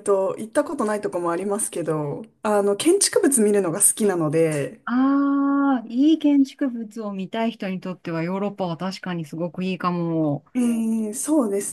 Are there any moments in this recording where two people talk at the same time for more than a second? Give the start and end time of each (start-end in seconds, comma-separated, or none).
none